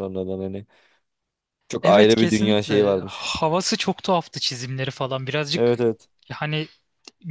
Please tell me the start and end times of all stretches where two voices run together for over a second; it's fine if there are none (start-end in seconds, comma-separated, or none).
1.8-3.4